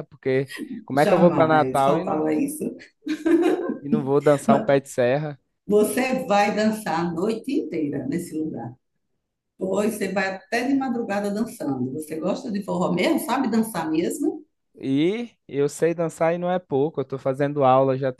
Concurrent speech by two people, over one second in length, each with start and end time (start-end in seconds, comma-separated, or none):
0.9-2.2